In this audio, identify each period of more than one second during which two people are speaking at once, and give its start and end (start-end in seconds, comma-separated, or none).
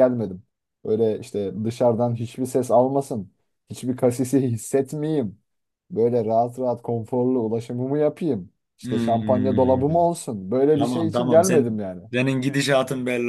8.8-10.1, 10.8-12.0